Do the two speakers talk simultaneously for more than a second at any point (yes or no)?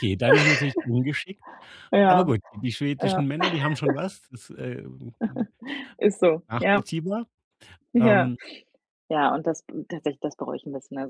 no